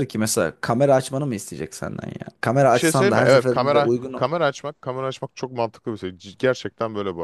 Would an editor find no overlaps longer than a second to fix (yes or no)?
no